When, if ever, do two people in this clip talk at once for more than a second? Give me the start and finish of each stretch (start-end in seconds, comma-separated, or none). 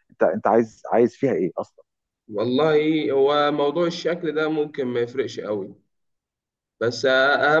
none